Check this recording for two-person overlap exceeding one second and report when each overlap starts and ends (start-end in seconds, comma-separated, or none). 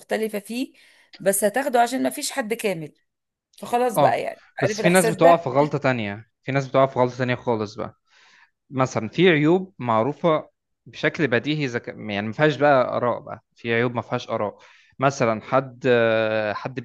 4.0-5.4